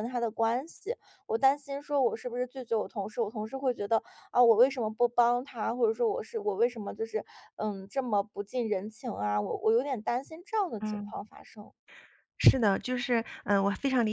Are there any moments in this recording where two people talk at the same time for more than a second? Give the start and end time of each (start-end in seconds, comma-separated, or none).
none